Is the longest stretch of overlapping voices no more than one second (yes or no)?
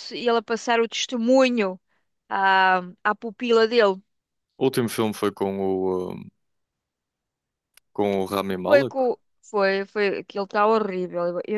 yes